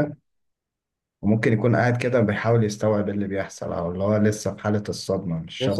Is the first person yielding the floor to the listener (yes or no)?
yes